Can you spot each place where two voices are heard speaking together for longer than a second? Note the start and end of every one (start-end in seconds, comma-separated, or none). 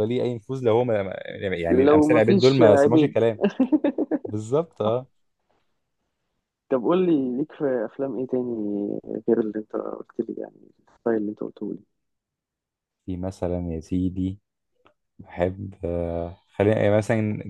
1.7-3.2